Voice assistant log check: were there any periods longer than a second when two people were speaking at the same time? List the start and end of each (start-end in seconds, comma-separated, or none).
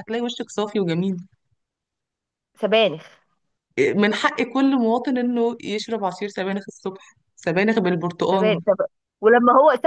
none